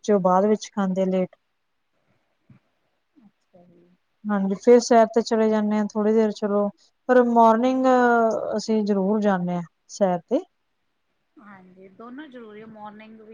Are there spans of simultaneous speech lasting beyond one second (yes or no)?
no